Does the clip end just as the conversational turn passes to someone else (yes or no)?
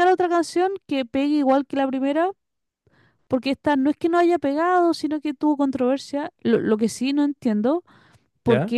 no